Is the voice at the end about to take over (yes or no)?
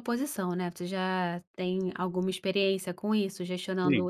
no